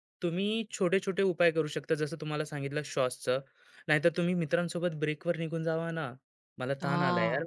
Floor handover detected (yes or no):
no